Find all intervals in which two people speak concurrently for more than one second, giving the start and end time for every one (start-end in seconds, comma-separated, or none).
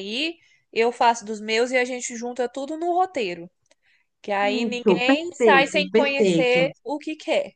4.7-6.7